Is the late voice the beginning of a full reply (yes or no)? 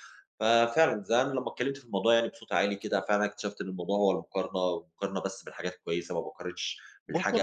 yes